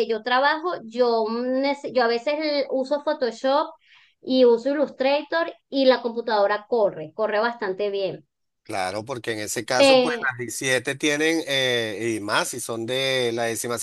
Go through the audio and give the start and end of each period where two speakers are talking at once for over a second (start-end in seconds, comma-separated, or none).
none